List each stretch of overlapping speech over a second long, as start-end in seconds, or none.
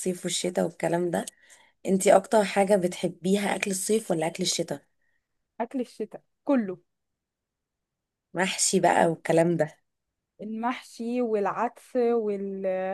none